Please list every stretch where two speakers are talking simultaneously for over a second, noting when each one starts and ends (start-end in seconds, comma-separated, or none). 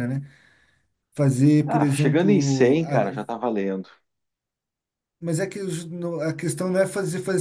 1.6-3.1